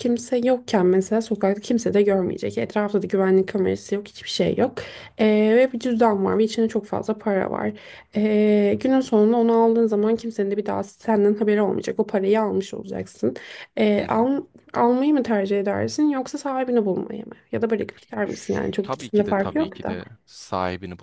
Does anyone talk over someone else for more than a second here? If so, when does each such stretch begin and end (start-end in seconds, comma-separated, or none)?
18.2-20.0